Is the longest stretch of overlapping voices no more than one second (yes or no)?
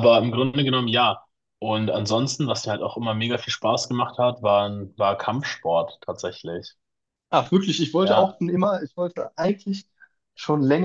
yes